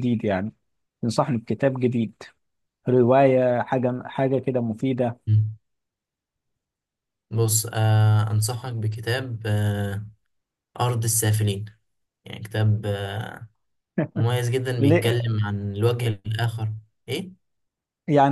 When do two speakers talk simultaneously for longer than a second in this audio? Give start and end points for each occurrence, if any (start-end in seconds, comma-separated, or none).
none